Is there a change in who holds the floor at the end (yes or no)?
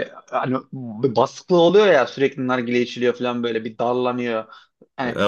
no